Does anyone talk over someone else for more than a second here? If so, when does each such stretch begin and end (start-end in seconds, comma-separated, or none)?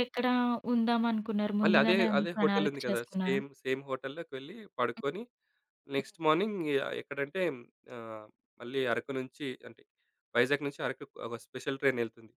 1.6-3.4